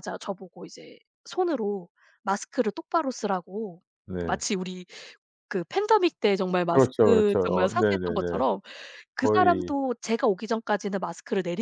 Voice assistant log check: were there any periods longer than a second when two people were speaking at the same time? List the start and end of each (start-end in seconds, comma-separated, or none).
6.7-8.4